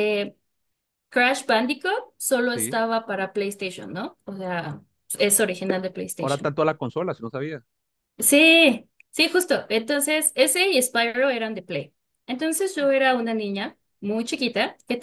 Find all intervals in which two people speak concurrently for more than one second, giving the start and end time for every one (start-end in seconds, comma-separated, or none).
none